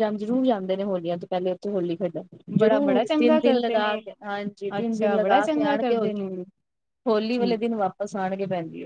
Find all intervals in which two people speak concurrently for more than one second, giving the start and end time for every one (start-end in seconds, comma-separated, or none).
2.6-4.0, 4.8-6.2